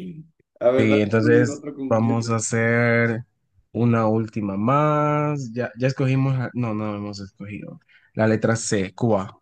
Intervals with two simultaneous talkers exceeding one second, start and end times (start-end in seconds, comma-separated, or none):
0.8-2.4